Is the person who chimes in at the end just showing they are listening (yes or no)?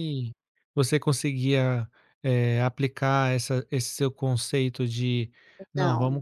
yes